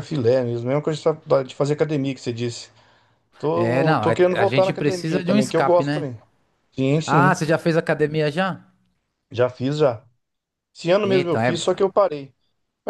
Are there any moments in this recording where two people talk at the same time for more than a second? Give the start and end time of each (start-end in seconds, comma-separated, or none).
3.5-6.1